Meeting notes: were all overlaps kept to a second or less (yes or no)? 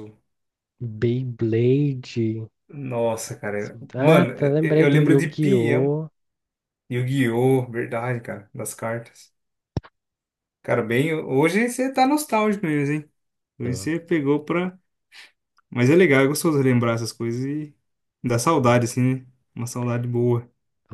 no